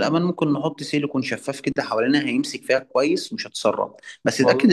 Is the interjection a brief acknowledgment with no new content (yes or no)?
yes